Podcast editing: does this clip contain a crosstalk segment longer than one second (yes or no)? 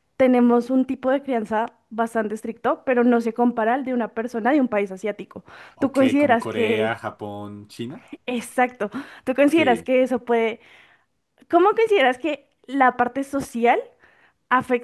yes